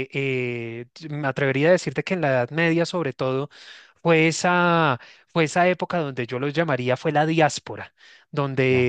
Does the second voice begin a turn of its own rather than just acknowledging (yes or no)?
no